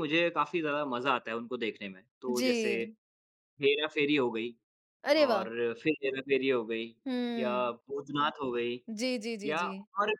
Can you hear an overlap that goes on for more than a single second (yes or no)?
no